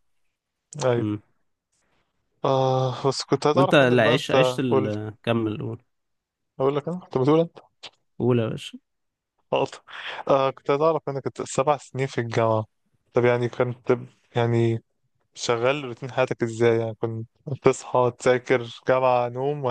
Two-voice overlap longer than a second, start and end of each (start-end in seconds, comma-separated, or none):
3.5-4.9